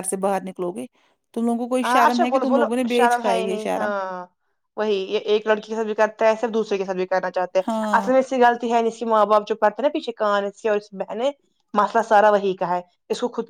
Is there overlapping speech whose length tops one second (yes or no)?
yes